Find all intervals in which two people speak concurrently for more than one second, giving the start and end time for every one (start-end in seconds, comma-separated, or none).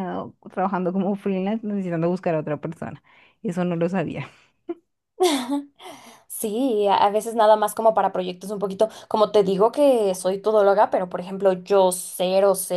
none